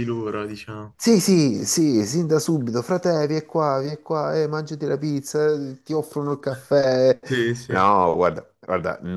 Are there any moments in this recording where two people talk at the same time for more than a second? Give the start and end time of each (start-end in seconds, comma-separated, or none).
none